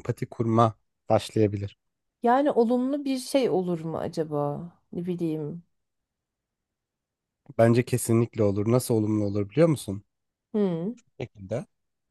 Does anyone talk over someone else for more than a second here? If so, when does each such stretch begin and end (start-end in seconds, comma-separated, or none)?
none